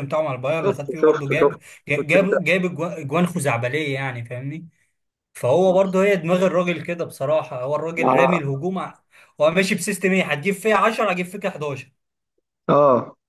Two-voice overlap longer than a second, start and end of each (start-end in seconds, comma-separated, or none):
0.7-2.3